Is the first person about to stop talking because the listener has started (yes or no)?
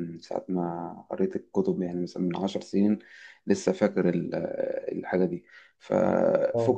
no